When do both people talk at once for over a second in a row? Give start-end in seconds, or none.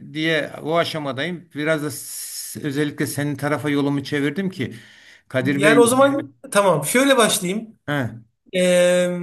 none